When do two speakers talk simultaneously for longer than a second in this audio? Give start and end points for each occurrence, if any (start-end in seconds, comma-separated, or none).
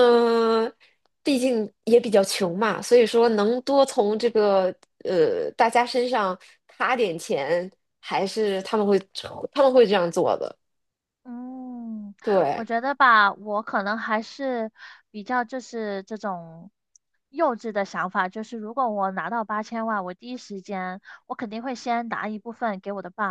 none